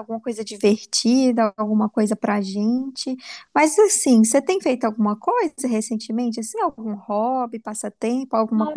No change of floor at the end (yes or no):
no